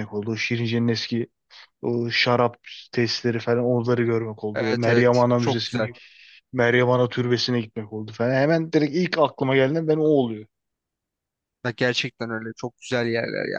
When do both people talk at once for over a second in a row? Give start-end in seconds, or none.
4.5-5.9